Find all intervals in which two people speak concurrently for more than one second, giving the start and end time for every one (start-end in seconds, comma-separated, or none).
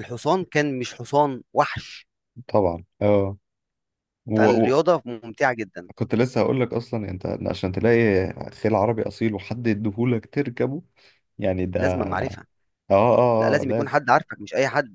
none